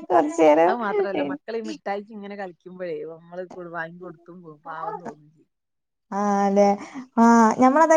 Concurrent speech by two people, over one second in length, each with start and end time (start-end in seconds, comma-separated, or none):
none